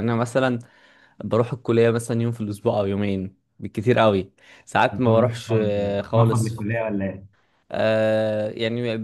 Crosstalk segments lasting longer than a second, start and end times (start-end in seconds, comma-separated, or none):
4.9-6.7